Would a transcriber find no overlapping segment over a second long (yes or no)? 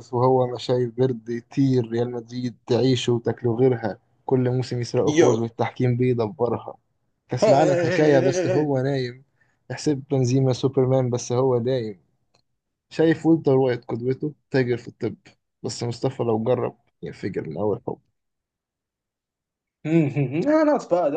no